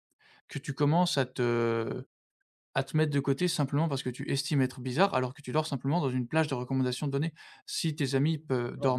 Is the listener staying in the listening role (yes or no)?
yes